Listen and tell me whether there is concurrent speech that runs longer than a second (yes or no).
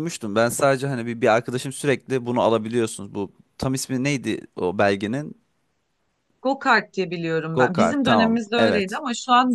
yes